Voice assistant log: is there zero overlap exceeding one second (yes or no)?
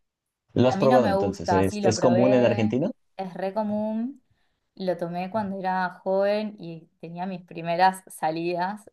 no